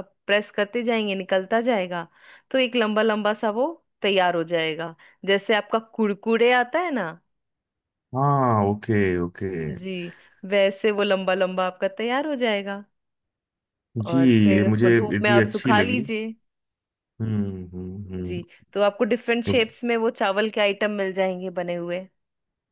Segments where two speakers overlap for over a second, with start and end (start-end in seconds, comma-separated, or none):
14.1-16.0